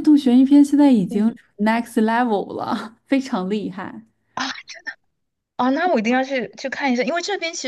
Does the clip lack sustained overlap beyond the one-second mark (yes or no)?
yes